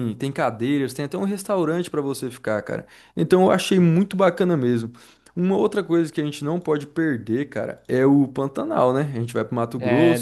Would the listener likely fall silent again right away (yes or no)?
yes